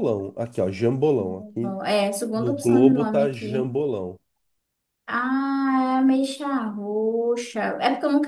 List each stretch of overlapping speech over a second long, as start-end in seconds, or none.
2.3-3.7